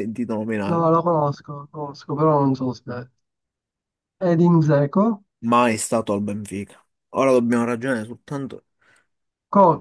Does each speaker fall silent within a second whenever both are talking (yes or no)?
yes